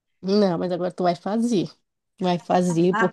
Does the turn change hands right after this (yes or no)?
no